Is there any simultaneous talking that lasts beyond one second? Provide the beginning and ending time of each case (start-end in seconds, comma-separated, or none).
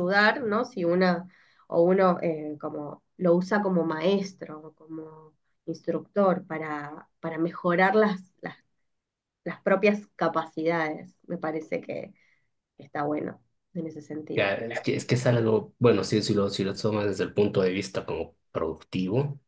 none